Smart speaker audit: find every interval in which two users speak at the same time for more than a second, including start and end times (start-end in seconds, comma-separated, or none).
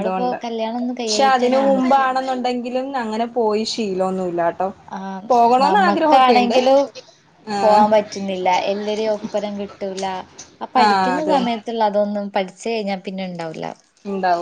none